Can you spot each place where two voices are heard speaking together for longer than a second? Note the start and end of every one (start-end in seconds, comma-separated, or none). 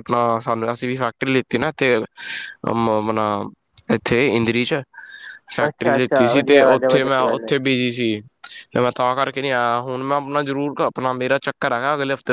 5.7-7.5